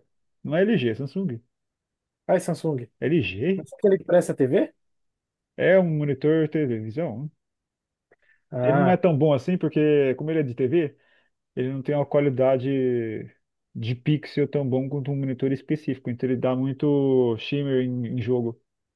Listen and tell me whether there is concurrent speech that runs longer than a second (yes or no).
no